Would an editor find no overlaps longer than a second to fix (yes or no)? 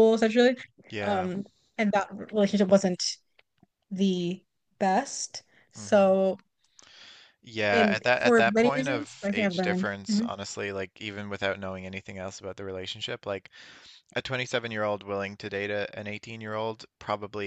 no